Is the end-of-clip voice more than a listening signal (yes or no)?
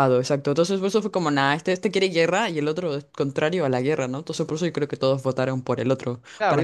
yes